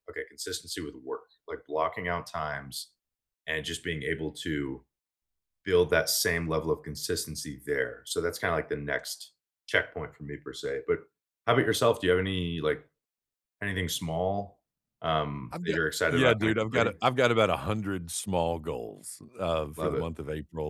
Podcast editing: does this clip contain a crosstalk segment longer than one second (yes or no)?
yes